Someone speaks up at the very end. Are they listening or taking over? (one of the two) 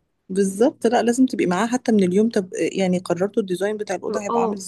taking over